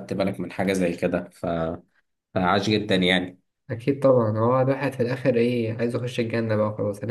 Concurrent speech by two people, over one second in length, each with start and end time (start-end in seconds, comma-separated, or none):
none